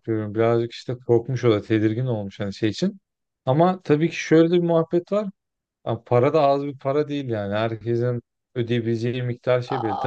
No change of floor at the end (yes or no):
no